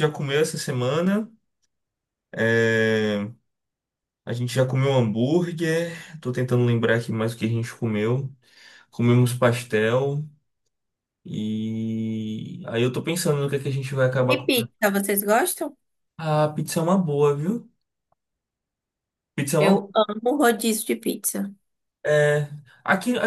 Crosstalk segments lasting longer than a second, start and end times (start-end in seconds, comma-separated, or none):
none